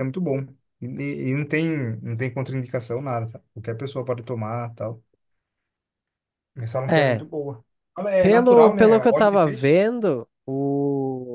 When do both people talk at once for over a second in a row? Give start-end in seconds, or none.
8.2-9.8